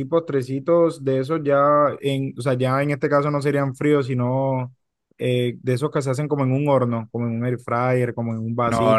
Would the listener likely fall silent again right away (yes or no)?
yes